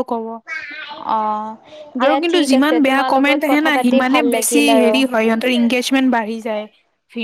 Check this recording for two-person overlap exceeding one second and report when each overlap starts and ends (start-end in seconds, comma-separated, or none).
2.0-5.0